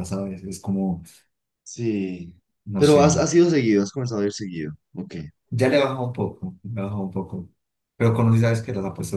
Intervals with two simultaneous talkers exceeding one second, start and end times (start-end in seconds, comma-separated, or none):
none